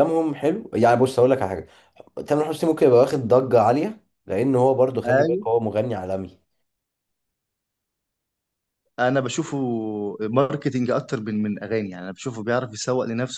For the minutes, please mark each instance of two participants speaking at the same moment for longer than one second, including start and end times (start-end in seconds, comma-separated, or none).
none